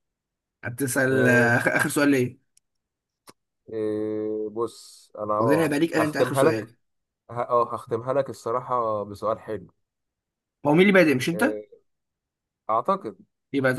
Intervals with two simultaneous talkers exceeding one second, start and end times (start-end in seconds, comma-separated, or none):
5.4-6.7